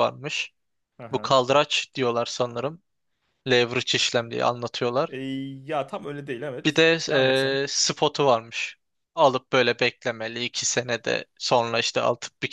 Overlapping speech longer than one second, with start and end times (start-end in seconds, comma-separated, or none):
none